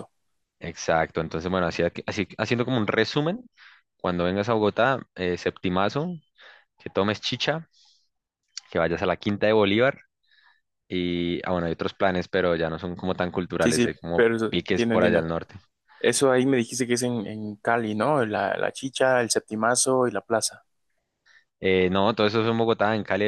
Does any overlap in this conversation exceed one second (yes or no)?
yes